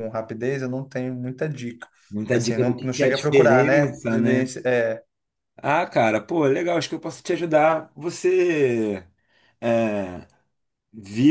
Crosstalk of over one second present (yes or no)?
yes